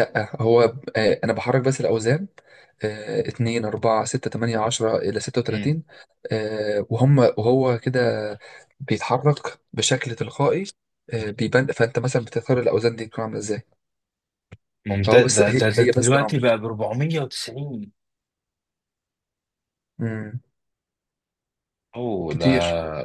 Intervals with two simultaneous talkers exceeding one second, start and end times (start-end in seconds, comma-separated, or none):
15.1-16.4